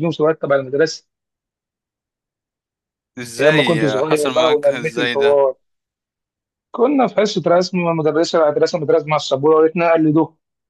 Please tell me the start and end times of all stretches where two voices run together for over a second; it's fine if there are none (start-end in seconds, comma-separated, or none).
3.4-5.4